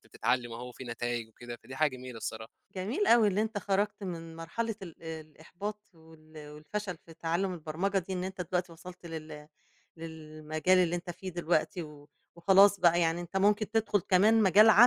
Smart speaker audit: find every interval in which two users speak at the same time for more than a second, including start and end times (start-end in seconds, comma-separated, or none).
none